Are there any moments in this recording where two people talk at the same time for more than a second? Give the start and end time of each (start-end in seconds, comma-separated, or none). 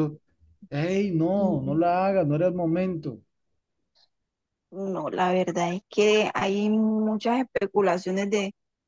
none